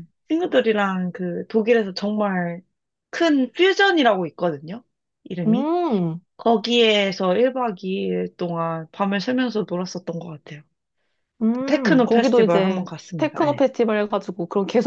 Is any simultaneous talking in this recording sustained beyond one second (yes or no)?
yes